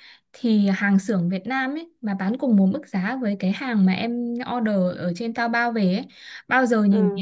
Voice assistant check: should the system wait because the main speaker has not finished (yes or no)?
yes